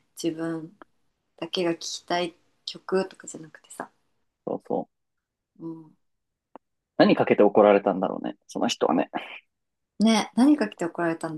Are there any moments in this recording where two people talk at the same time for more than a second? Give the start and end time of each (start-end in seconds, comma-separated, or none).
none